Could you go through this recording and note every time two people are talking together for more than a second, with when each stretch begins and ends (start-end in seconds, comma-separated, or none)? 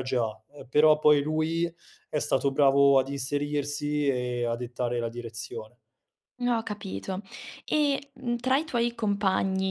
none